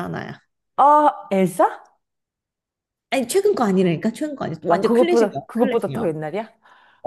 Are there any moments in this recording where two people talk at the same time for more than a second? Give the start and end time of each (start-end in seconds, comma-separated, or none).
4.7-6.1